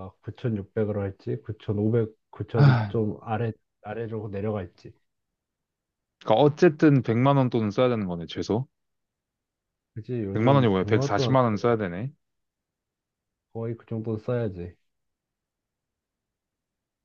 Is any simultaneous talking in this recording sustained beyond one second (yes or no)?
yes